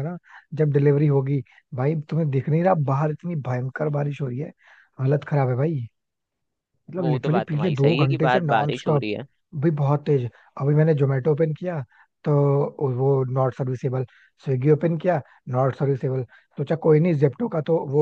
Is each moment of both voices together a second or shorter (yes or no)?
no